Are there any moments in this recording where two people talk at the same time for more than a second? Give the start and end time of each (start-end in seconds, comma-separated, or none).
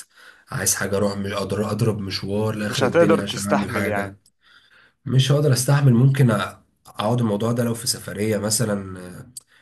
2.7-4.2